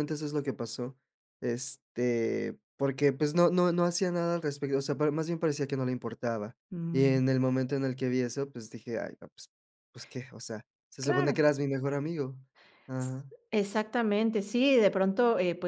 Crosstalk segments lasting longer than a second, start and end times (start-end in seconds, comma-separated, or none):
none